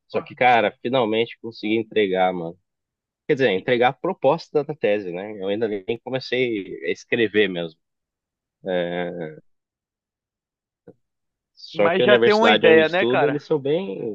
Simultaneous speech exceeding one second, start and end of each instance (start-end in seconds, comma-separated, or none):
11.7-13.4